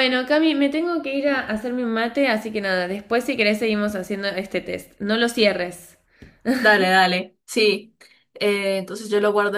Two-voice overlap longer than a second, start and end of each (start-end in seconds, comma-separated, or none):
none